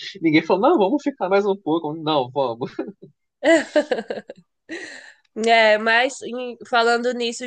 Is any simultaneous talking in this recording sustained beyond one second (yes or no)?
no